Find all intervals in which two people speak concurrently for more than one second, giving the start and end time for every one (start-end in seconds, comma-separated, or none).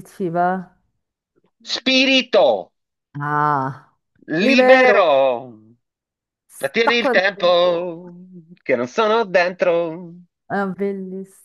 6.6-8.0